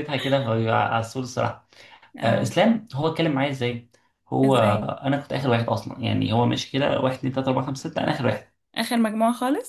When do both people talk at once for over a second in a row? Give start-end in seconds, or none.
none